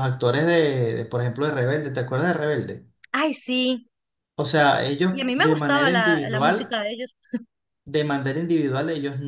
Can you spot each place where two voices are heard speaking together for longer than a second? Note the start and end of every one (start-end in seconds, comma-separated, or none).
5.1-6.8